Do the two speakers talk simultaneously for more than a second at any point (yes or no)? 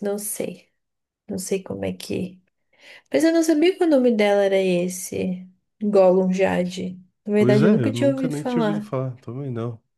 yes